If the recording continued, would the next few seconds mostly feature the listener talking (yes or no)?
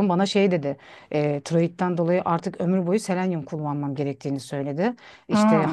no